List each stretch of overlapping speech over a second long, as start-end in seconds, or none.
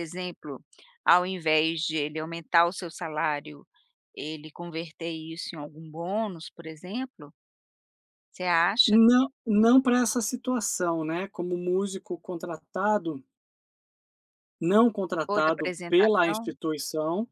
15.2-16.5